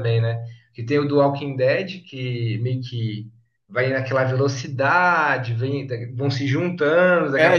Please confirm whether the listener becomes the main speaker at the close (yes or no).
yes